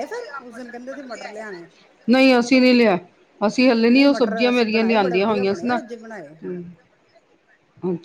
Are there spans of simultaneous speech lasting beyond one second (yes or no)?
yes